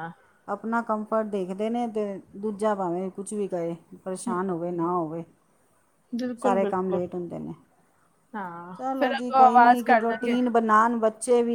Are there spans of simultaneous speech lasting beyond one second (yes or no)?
yes